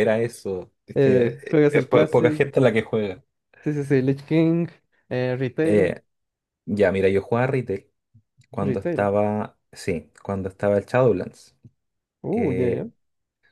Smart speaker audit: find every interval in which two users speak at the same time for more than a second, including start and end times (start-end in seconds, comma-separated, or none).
0.9-2.4